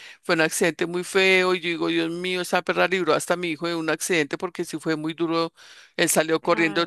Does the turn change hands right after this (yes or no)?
no